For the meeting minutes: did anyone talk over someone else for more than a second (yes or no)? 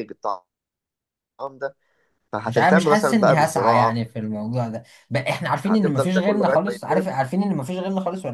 yes